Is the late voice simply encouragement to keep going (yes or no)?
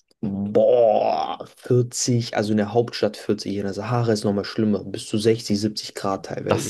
no